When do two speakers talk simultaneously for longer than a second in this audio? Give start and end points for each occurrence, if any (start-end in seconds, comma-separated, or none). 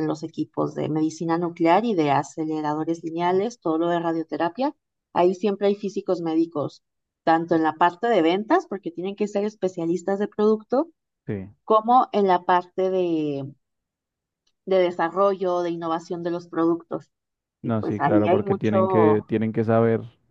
17.6-19.2